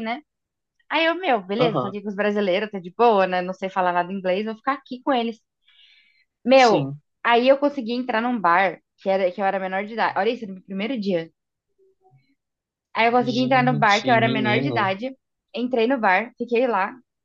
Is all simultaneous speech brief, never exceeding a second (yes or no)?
no